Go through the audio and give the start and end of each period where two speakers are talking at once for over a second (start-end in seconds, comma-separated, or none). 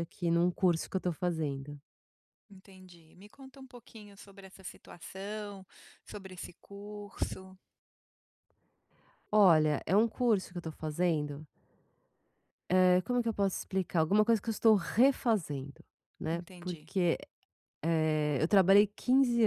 none